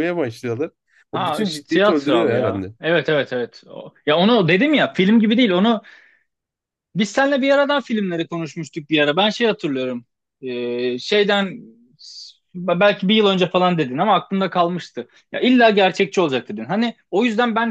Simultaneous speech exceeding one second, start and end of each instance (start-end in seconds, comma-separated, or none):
1.1-2.7